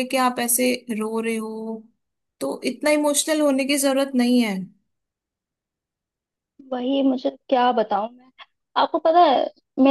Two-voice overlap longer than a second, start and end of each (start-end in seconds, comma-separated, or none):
none